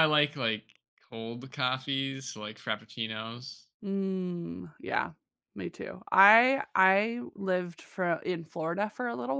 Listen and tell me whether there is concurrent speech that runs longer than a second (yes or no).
no